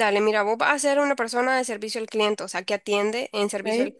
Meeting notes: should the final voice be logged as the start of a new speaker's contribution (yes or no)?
no